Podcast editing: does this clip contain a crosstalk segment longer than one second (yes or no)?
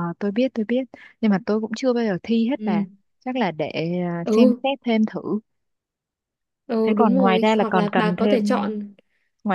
yes